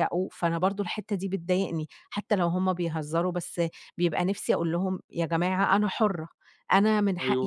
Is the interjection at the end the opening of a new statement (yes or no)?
no